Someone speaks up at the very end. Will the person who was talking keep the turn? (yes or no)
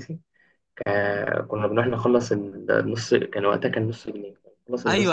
no